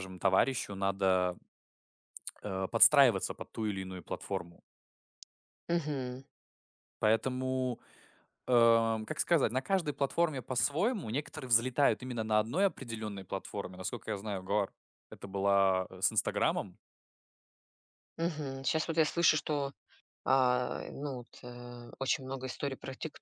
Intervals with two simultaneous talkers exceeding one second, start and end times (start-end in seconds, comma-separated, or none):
none